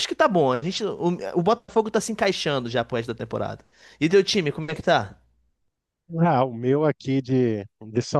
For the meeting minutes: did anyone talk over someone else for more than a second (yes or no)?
no